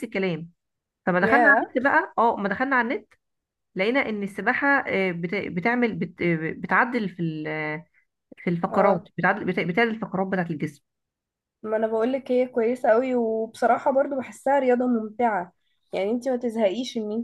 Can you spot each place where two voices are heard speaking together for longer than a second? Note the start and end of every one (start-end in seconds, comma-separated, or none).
none